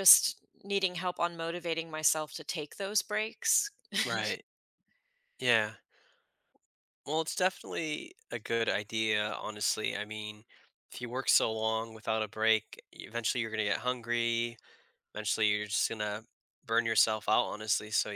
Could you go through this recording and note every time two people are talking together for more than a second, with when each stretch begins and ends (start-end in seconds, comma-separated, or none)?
none